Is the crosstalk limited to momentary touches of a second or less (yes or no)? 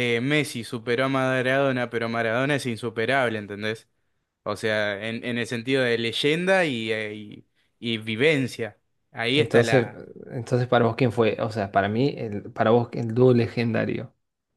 yes